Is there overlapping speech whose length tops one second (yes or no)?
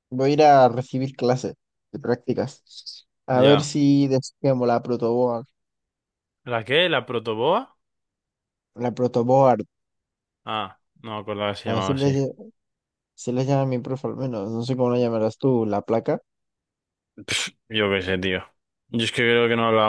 no